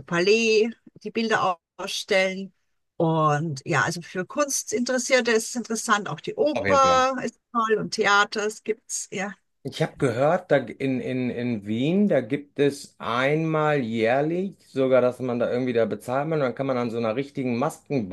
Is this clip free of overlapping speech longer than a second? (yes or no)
yes